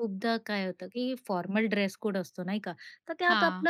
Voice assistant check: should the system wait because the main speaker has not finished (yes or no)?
yes